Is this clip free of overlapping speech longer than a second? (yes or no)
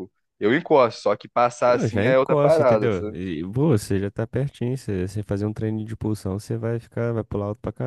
no